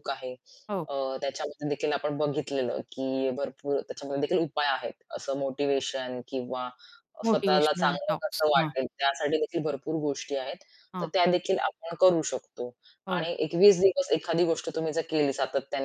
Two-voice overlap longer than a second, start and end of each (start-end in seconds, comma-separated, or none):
7.3-8.7